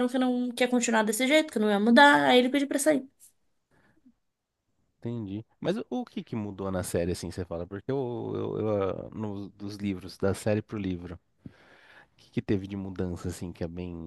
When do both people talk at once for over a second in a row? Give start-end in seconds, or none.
none